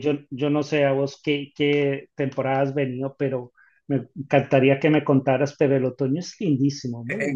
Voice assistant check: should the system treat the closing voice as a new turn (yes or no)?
yes